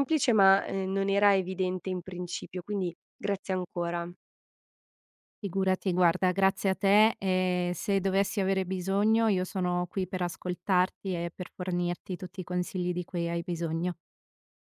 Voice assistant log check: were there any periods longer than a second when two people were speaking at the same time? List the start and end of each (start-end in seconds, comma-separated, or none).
none